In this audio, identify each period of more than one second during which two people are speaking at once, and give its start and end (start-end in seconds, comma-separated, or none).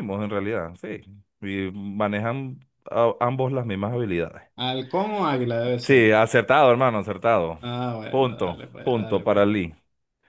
8.1-9.6